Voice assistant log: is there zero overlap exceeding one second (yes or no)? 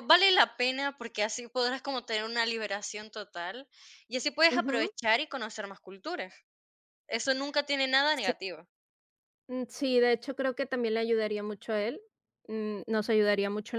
yes